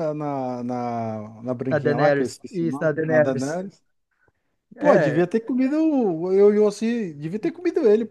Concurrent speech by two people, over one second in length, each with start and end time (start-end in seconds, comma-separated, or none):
1.7-3.6